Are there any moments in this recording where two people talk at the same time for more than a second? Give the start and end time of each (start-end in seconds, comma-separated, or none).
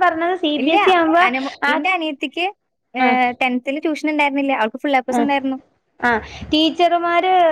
none